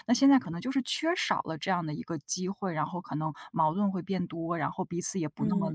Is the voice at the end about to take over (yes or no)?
yes